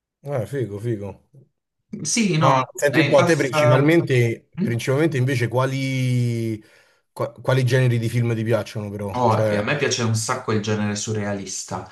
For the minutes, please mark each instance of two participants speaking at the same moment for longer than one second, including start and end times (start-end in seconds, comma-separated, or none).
2.3-3.9